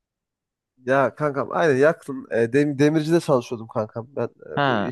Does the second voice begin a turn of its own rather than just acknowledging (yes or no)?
no